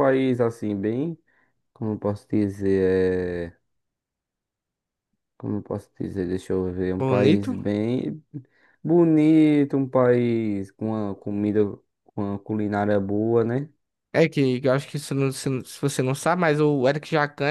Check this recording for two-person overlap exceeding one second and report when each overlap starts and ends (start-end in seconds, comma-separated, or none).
none